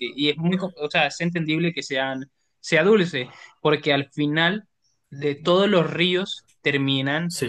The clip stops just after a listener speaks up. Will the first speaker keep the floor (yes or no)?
yes